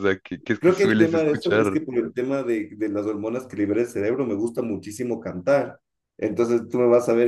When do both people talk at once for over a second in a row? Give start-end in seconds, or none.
0.6-1.8